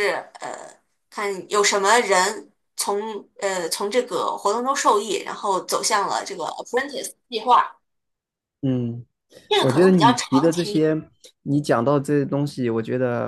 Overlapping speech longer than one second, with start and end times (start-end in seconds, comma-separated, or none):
9.6-10.8